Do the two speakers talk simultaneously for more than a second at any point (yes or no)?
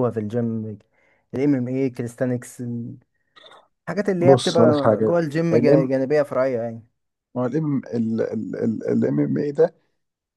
yes